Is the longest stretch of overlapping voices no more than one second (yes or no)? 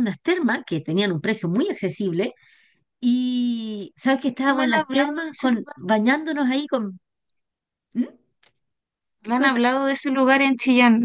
no